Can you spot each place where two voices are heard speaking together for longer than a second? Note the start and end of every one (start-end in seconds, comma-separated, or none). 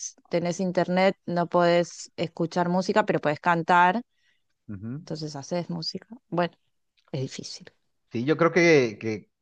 none